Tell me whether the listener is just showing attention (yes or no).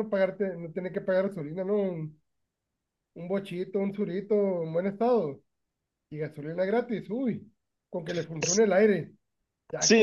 no